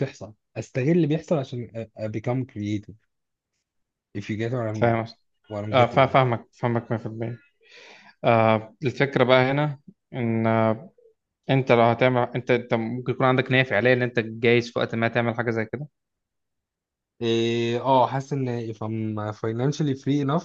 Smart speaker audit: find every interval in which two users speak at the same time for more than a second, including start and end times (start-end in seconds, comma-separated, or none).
none